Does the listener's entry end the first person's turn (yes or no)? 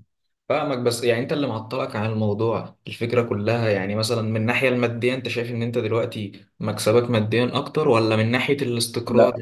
no